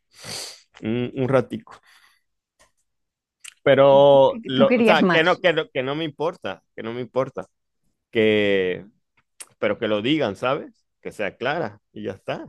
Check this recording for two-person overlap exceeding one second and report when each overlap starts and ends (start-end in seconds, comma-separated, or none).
3.9-5.4